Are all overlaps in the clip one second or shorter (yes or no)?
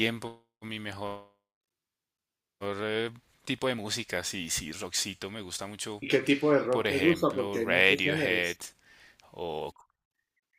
no